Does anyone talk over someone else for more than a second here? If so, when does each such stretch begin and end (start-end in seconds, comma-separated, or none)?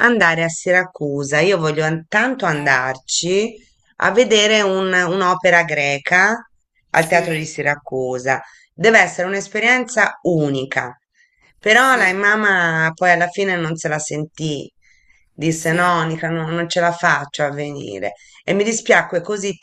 none